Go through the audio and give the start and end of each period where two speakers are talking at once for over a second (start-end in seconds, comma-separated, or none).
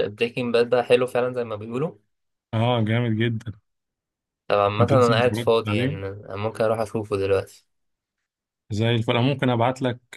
4.8-6.0